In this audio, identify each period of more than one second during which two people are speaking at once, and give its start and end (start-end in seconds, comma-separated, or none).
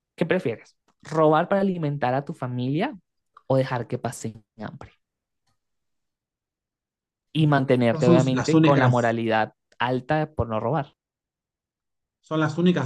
7.9-9.2